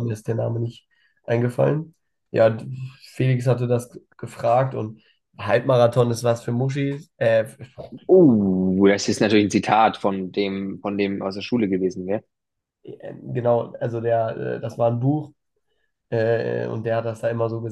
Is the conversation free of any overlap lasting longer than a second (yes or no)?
yes